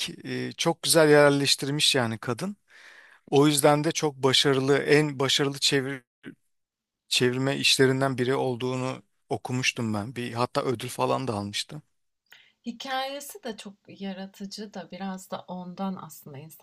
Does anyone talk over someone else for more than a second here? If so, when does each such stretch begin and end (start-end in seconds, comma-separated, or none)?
none